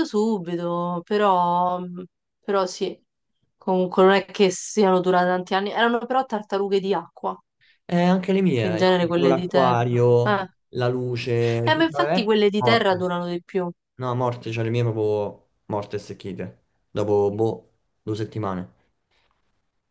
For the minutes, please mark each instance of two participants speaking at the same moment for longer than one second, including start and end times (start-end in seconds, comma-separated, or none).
8.6-10.5, 11.7-13.1